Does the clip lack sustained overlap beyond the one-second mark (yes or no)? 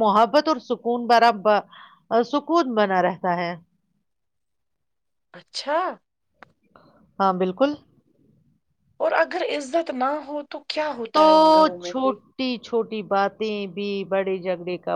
yes